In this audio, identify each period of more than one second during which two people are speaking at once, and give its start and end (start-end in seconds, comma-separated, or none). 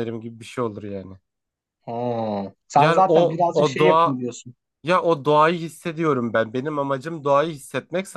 2.8-4.2